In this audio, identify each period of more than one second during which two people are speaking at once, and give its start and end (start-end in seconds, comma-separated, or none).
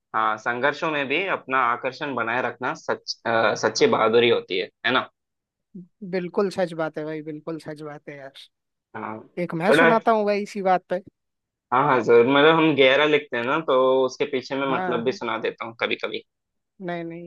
none